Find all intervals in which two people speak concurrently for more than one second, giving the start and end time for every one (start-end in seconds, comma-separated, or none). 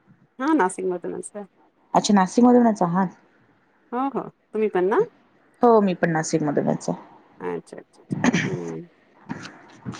none